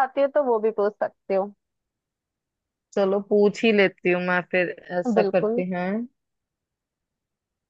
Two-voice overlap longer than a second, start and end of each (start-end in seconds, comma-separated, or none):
none